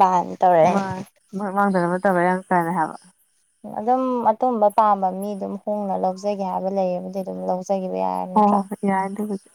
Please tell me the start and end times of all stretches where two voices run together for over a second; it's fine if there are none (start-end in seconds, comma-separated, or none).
none